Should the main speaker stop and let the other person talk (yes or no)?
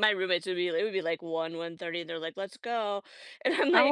yes